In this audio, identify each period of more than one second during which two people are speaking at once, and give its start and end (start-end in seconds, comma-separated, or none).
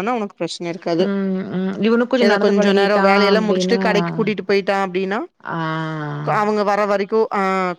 2.2-3.8